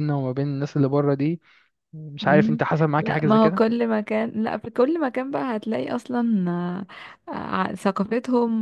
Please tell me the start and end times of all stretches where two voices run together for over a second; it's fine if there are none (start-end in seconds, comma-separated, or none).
2.2-3.6